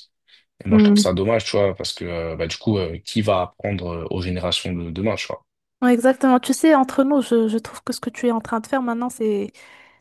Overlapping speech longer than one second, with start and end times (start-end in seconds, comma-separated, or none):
none